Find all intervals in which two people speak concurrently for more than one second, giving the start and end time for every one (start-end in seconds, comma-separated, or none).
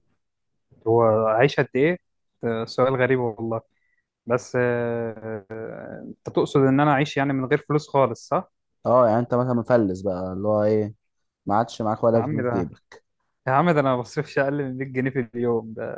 none